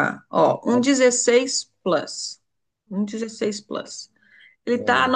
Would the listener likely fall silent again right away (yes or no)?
yes